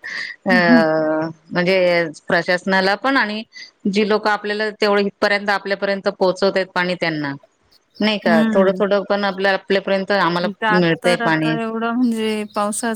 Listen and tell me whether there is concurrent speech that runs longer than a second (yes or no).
no